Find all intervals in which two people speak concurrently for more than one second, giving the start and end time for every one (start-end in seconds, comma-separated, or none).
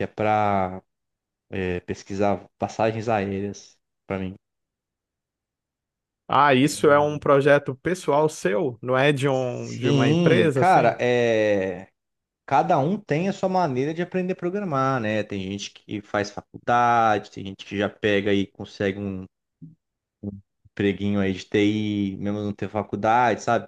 9.3-11.0